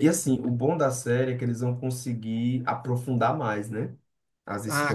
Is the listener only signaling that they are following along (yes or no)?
no